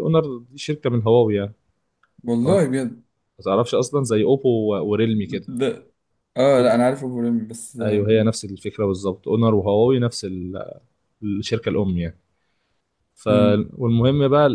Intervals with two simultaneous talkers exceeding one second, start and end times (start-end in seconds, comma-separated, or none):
none